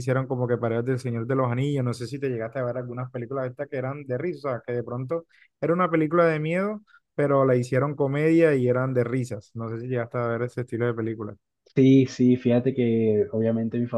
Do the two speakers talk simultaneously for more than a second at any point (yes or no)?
no